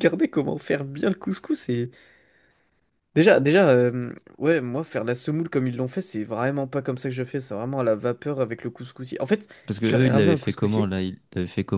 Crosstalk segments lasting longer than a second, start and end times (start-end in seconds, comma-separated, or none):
9.7-10.9